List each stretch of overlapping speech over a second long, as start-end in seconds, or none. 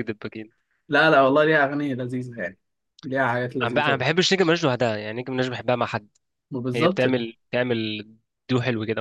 none